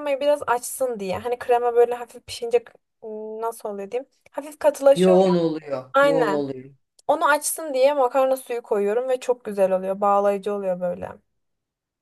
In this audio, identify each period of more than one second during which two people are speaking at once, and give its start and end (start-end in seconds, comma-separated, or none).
none